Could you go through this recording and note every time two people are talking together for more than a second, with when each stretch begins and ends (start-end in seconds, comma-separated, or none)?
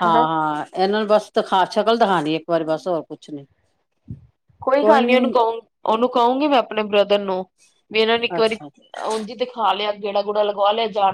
none